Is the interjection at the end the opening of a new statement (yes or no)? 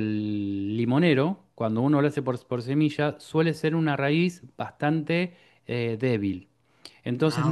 no